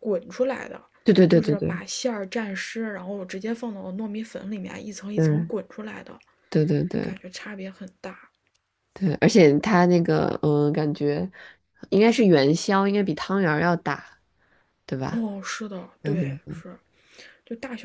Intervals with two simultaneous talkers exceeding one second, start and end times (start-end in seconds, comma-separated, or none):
none